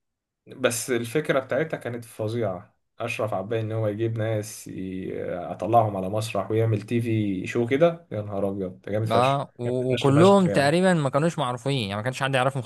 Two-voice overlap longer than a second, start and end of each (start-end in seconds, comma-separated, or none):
9.1-10.7